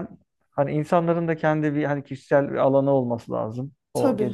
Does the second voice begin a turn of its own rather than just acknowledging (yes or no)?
no